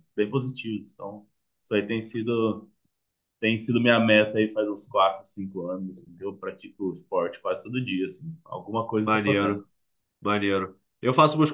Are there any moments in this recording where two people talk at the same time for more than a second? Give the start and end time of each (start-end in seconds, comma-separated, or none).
none